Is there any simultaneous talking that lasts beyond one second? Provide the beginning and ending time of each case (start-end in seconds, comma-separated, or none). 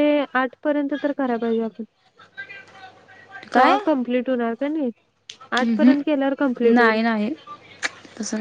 5.6-7.0